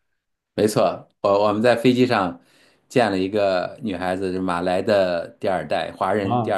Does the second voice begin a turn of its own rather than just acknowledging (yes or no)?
no